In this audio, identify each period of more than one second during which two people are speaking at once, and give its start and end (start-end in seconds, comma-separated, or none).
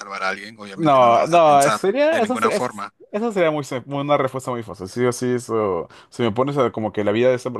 0.7-2.9